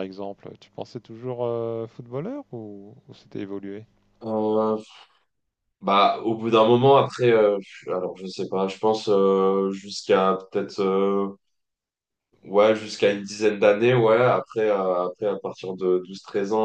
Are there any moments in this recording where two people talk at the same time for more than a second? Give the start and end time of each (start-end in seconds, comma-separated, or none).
none